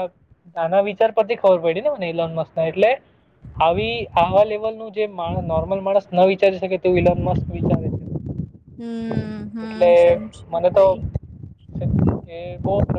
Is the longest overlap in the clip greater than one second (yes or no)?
no